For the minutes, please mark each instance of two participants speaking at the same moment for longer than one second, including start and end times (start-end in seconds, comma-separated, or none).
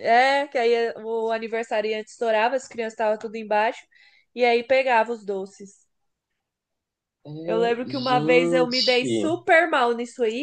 7.4-9.3